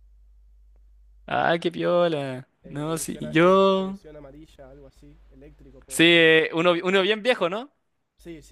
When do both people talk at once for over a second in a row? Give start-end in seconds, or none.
2.6-4.0